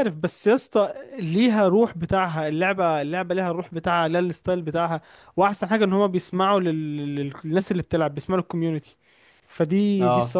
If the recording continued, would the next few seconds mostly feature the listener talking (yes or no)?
no